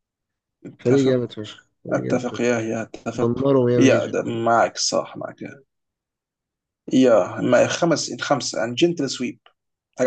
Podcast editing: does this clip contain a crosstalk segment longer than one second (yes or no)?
yes